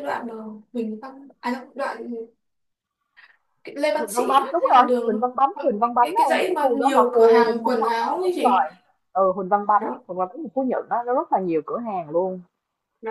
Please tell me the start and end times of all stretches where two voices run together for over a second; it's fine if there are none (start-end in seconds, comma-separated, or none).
3.9-8.6